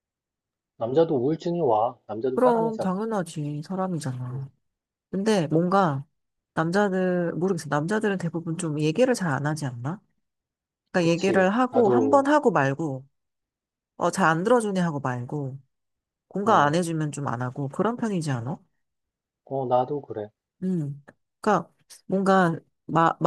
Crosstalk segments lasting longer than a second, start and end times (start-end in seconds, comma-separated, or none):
11.0-12.3